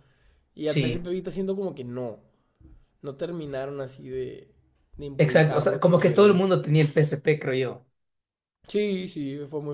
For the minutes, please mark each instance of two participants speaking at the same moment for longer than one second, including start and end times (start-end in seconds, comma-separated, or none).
5.2-6.4